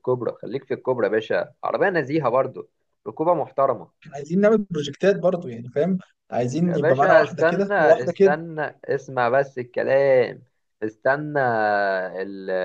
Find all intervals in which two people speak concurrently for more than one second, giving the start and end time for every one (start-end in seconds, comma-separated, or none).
6.6-8.4